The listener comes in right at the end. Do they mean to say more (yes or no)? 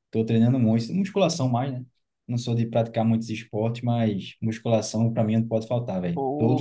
yes